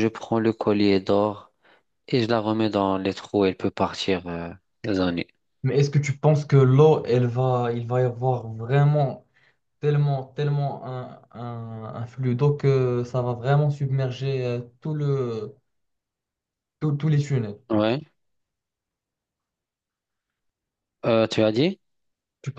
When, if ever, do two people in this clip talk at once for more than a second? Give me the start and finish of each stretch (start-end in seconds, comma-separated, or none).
none